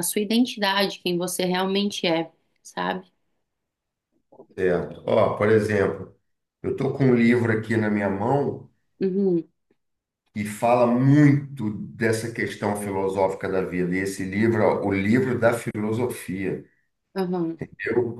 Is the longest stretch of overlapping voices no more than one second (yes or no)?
yes